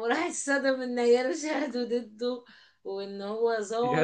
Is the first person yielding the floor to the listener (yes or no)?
no